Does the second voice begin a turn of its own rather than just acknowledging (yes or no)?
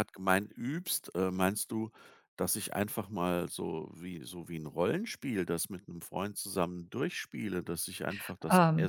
no